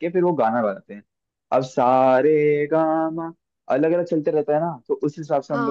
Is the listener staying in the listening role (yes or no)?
yes